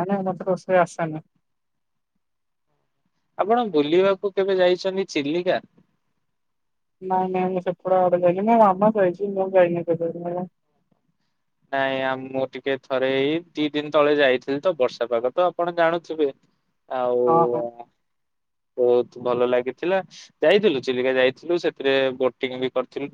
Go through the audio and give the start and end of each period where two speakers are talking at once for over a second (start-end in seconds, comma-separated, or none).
none